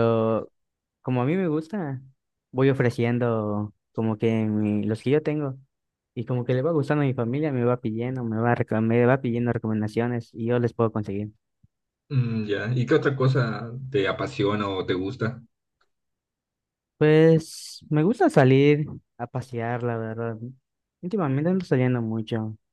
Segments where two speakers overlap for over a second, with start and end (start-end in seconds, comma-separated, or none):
none